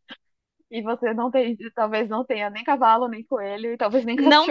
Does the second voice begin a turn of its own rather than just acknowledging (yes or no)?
yes